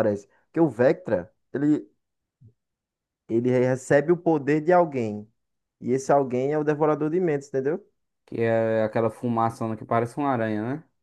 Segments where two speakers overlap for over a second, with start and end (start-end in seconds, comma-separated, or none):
none